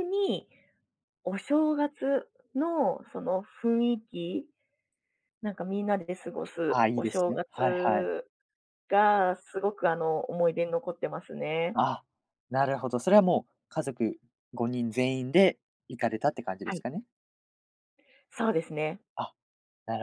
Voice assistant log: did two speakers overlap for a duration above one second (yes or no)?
yes